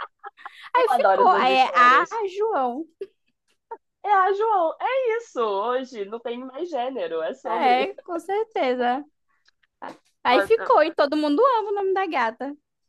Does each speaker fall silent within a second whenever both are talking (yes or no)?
no